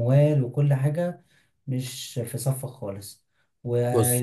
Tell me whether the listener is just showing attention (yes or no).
yes